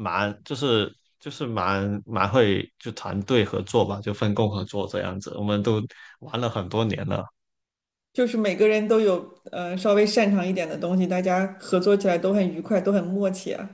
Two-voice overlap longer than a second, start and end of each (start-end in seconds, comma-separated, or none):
none